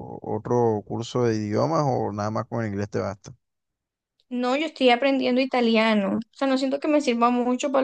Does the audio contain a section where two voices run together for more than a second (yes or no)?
no